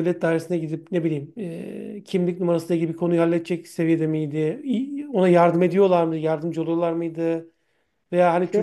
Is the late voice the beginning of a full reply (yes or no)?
no